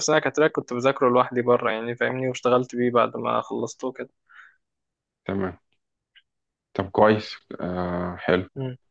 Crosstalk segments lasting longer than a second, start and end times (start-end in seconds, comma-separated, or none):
none